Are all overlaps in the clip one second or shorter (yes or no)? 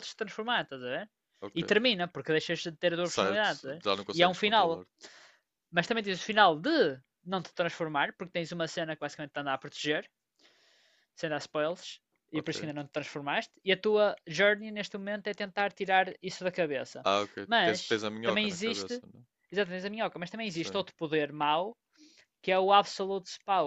no